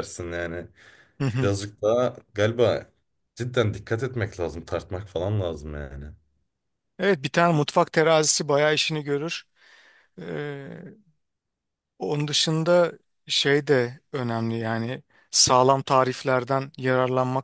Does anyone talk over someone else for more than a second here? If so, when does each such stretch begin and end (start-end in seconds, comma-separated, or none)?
none